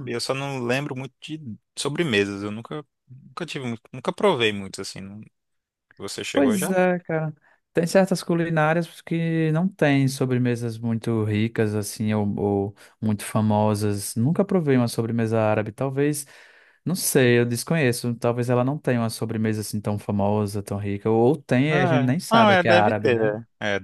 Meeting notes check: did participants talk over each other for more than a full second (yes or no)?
yes